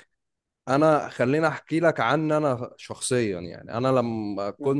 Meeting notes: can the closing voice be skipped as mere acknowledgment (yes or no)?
yes